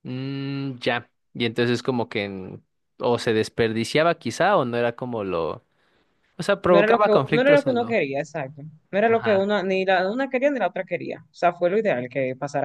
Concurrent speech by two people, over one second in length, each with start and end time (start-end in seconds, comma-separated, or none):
6.7-8.0